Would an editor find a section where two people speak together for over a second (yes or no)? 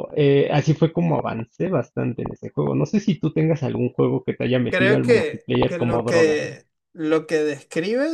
yes